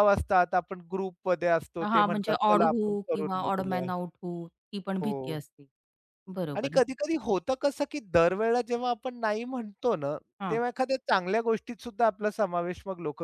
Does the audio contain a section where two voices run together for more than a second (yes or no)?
yes